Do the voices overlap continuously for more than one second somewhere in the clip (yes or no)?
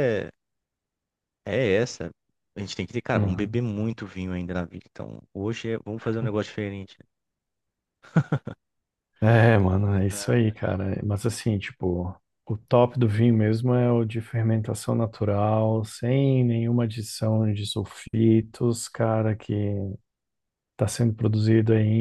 no